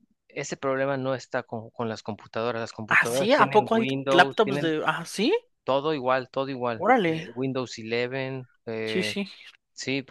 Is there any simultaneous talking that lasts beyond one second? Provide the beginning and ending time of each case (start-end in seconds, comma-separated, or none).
2.9-4.7